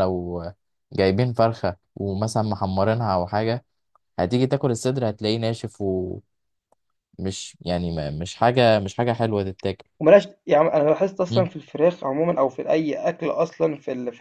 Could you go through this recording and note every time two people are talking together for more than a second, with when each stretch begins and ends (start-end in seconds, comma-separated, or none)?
none